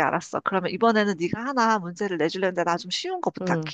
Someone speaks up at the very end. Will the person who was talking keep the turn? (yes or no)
no